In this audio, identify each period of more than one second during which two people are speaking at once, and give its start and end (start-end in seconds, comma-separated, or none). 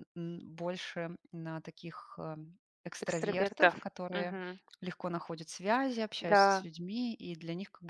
3.0-4.3